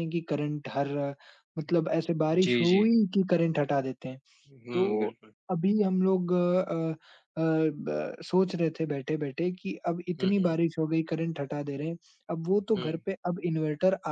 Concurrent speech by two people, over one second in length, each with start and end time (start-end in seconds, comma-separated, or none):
none